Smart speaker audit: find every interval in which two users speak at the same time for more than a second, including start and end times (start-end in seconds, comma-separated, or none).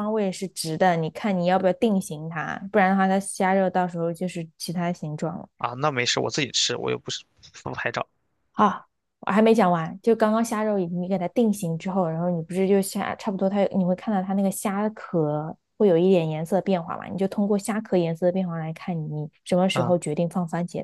none